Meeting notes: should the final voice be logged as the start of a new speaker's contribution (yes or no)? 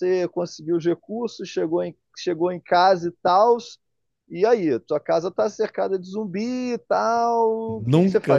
yes